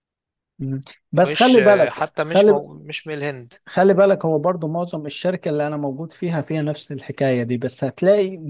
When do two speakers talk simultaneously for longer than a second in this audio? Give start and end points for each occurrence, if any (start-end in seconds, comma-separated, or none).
1.2-2.7